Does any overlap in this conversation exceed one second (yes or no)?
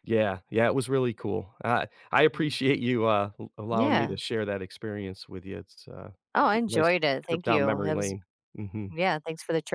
yes